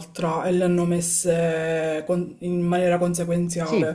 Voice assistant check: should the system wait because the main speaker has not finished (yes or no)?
no